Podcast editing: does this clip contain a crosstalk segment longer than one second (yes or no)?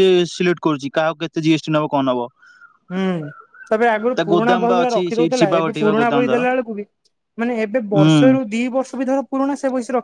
yes